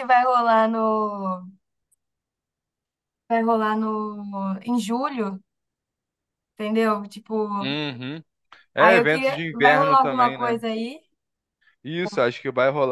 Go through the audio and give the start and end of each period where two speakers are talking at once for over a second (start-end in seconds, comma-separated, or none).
8.8-10.6